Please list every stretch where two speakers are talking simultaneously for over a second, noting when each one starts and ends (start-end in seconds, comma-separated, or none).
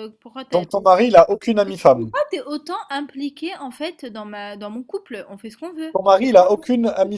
none